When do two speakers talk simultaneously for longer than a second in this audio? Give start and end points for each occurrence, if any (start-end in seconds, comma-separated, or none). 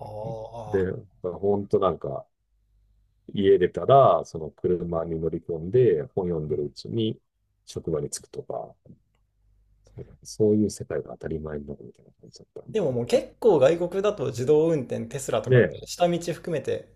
none